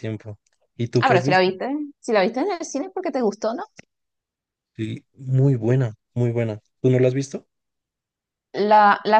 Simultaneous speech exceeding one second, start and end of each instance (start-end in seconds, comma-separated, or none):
none